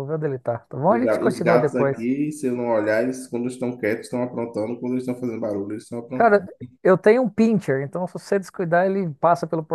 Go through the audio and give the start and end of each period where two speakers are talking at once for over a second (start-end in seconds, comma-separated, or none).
0.9-2.1